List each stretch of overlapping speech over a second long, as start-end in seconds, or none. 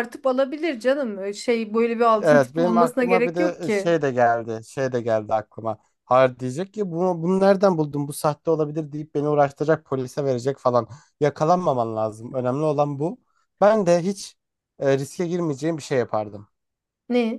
2.2-4.0